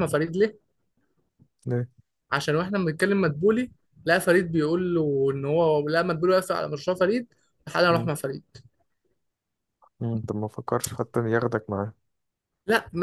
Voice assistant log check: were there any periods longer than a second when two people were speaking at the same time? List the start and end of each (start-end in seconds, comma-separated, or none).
none